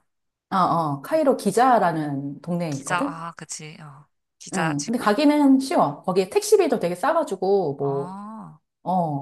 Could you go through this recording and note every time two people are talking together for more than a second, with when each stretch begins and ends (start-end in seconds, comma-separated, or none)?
none